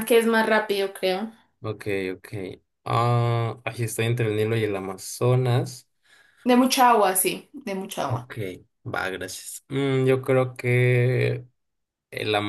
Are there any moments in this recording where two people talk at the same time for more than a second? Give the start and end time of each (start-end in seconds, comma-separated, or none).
none